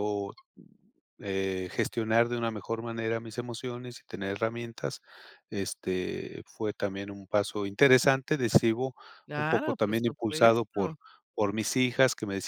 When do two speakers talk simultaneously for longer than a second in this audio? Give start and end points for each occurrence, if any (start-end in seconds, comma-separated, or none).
9.3-10.9